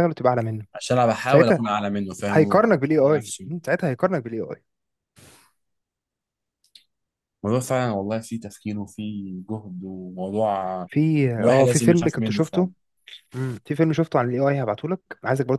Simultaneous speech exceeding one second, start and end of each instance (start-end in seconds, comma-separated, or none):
2.3-3.5, 11.4-12.7